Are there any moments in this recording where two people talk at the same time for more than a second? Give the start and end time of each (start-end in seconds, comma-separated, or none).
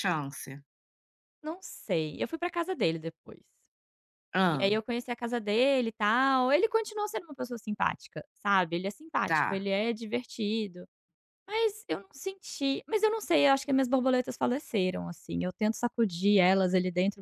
none